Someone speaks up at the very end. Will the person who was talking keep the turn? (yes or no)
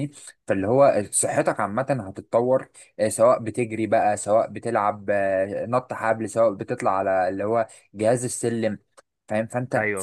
yes